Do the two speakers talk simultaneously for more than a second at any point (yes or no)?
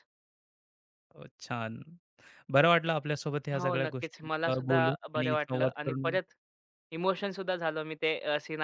yes